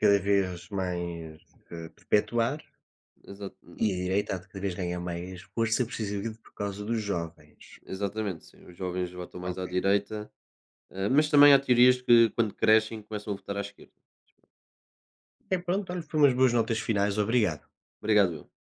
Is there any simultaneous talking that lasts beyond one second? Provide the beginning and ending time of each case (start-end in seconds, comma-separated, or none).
none